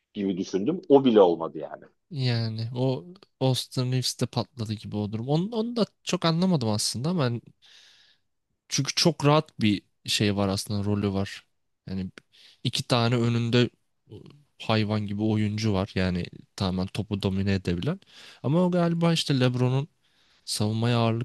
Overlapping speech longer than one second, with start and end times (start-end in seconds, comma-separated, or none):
none